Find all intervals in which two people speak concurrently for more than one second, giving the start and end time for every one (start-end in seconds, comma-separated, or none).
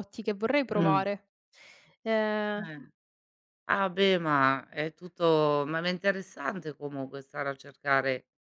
none